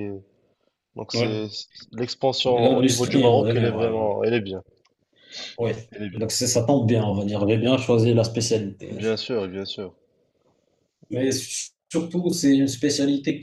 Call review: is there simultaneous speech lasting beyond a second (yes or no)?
yes